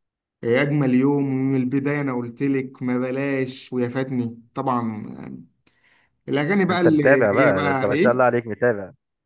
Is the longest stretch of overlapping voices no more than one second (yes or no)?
no